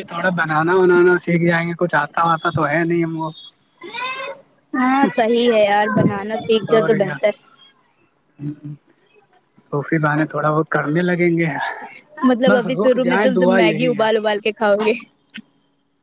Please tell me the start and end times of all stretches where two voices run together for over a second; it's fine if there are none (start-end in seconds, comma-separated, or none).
12.5-14.0